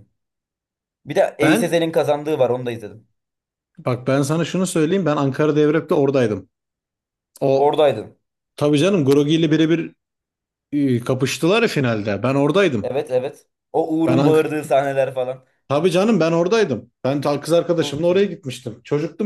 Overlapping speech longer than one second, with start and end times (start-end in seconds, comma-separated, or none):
none